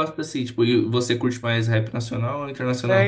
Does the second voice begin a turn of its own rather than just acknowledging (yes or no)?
yes